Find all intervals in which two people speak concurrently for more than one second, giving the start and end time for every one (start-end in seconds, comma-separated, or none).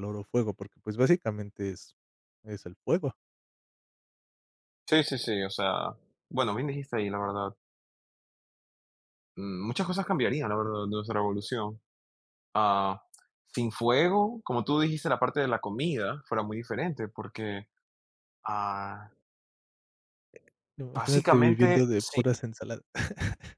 20.9-22.2